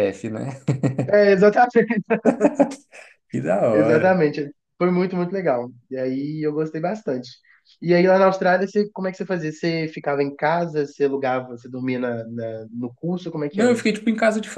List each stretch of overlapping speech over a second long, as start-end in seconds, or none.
none